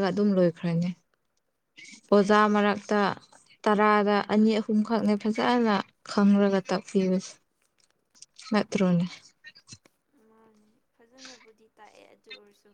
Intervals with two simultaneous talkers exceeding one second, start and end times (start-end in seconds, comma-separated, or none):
none